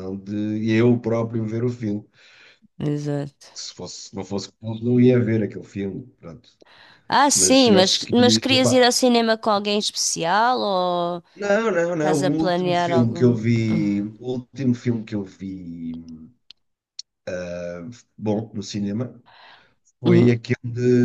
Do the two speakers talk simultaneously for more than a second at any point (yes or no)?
yes